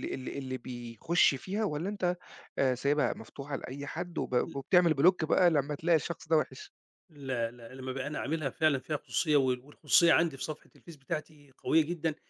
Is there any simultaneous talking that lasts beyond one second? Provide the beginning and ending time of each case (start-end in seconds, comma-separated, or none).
none